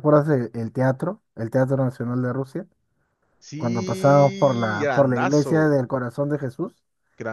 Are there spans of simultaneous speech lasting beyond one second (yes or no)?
yes